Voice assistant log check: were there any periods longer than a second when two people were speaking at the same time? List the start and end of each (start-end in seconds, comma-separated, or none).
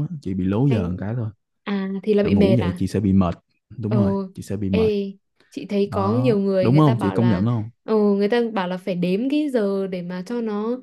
5.8-7.4